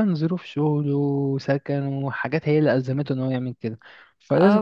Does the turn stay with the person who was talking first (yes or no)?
no